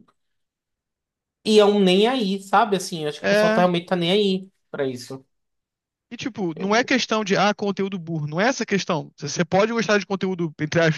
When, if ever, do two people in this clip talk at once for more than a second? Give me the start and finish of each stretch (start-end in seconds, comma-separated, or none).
none